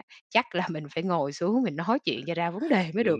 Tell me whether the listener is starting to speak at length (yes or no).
yes